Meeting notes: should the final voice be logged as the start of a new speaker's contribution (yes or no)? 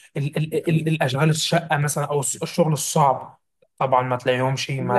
yes